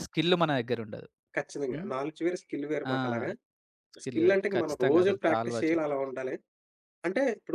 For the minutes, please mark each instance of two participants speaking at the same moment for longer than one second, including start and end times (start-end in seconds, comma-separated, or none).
4.0-6.0